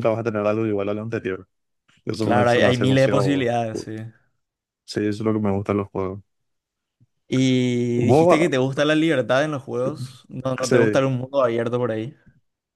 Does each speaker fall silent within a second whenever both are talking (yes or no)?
no